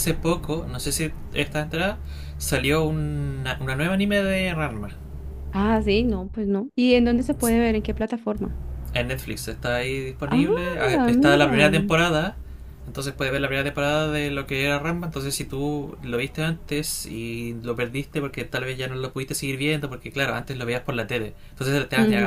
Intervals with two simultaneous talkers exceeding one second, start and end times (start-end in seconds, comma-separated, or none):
10.3-11.9